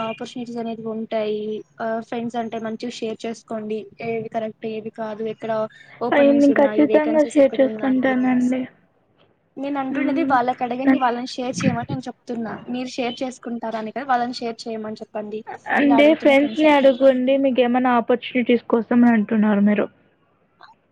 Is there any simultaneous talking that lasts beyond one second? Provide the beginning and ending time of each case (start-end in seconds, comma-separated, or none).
6.2-8.5